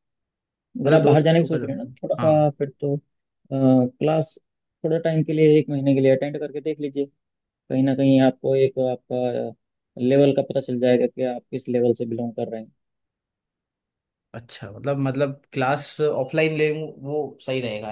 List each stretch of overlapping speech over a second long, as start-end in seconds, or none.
0.9-2.5